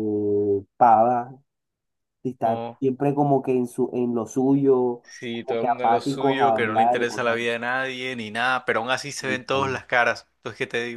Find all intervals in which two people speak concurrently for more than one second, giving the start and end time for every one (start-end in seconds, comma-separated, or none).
5.0-7.4